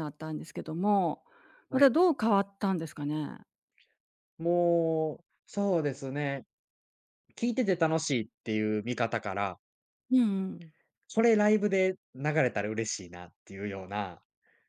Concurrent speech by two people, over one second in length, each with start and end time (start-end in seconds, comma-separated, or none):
none